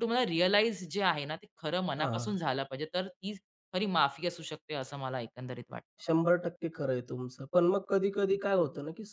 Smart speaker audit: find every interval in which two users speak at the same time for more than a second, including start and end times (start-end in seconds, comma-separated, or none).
none